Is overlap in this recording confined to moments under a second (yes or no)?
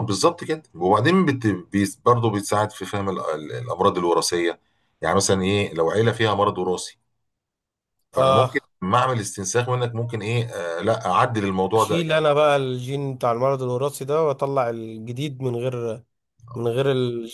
yes